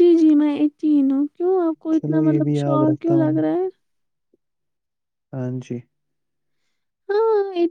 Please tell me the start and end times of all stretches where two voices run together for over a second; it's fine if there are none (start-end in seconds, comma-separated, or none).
1.9-3.4